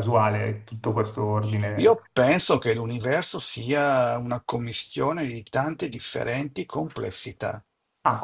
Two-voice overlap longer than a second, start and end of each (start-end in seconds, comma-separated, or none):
none